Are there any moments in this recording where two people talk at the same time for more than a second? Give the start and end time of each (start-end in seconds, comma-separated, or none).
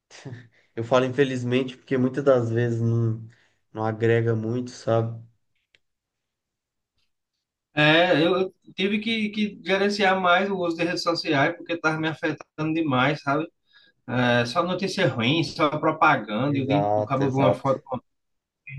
16.4-17.7